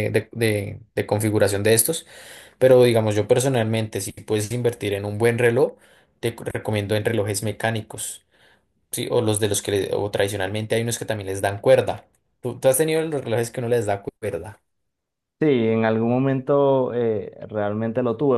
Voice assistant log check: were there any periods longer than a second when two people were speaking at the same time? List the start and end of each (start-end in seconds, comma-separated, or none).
none